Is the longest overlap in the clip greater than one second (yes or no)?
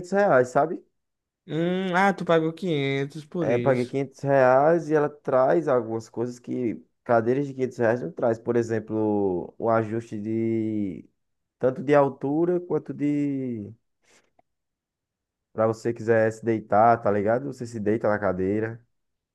no